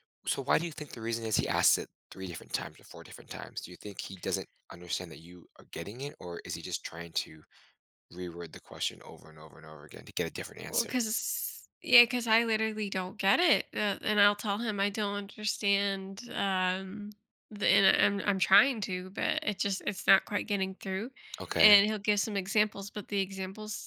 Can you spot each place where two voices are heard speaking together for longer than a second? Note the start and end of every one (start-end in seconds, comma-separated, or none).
none